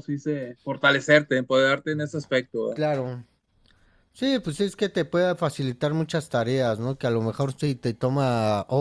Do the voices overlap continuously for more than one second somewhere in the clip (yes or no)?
no